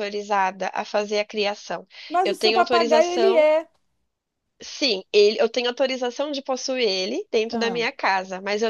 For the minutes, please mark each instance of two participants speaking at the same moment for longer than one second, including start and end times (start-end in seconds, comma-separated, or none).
2.2-3.5